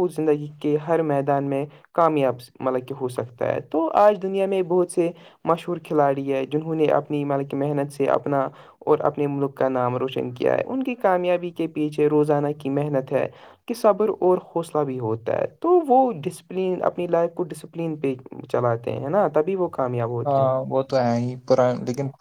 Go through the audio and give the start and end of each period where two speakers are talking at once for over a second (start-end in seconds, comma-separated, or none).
none